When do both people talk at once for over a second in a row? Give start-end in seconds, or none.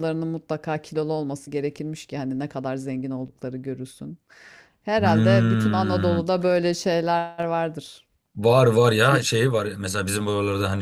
5.0-6.2